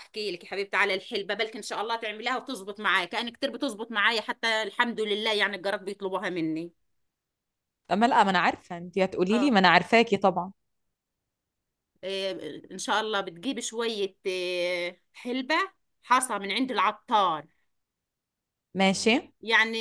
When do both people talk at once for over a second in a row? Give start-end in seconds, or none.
none